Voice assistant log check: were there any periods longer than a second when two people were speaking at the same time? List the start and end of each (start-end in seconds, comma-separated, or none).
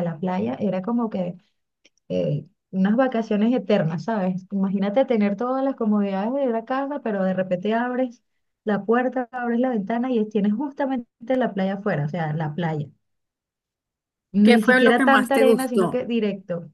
14.4-16.0